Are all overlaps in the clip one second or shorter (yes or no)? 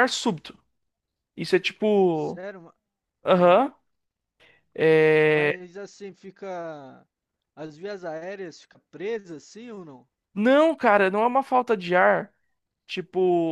yes